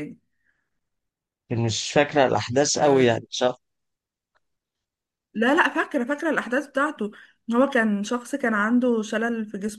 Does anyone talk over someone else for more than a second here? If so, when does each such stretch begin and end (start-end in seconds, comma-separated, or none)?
none